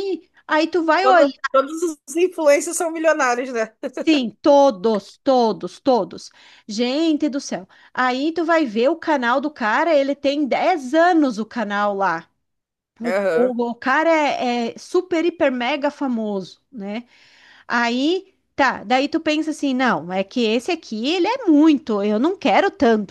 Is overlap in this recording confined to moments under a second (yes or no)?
yes